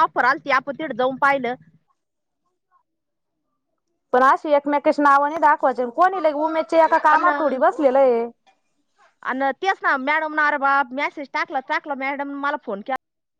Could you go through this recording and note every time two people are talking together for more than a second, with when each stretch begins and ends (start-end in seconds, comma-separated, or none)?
none